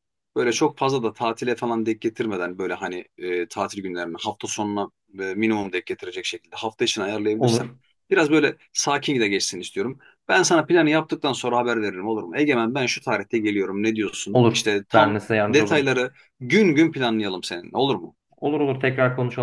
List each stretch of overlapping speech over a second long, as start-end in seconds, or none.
14.3-15.9